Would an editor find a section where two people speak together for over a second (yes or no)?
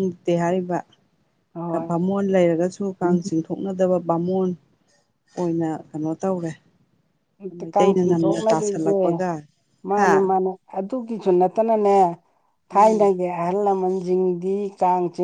yes